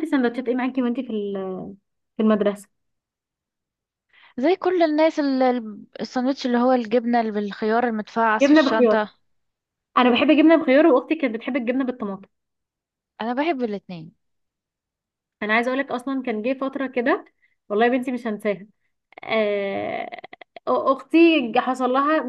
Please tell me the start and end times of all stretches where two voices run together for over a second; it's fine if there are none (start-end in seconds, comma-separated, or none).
none